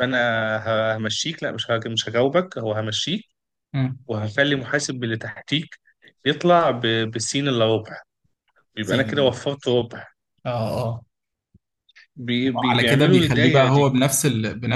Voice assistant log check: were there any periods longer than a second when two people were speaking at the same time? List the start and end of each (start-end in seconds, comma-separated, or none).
12.4-13.9